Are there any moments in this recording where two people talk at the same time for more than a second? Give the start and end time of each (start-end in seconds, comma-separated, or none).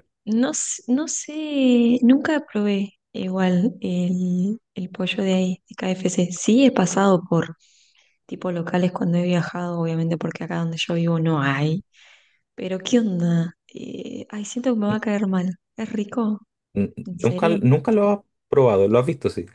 none